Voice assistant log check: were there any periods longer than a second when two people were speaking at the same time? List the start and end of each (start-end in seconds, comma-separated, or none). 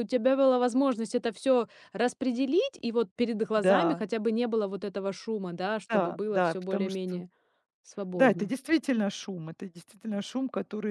5.9-7.2